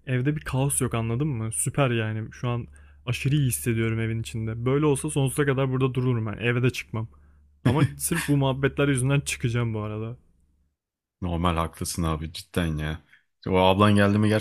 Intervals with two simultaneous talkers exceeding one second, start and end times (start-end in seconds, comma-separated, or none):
none